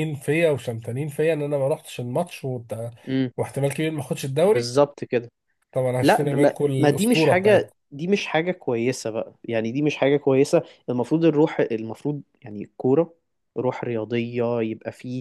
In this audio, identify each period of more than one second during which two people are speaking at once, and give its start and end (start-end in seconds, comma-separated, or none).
6.0-7.8